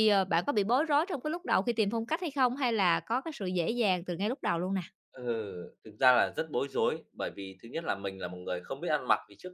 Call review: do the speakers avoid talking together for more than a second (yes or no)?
yes